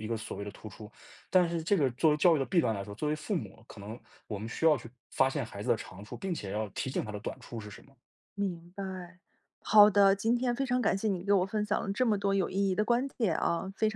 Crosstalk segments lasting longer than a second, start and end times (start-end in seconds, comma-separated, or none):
none